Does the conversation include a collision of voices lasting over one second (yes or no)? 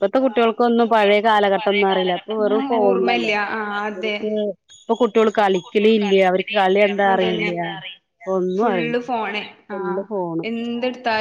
yes